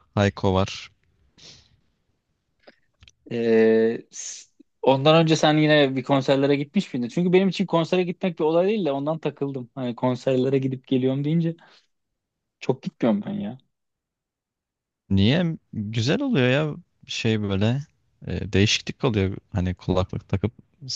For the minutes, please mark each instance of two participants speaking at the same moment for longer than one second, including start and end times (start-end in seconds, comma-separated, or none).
none